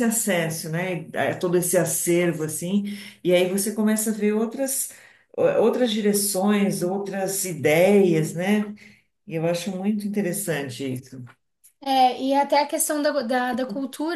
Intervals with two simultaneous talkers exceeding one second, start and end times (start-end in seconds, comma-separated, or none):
none